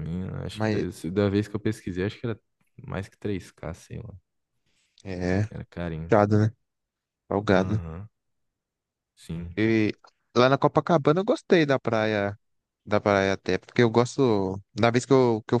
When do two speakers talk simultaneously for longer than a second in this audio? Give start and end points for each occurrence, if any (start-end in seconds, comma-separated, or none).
none